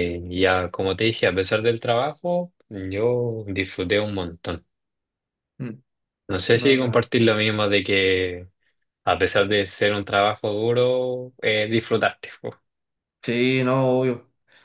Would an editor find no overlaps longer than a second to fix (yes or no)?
yes